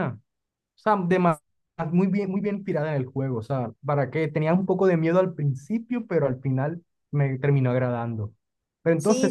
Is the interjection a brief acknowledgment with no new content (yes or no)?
yes